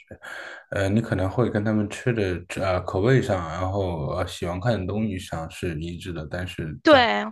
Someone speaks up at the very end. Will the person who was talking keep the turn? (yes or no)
yes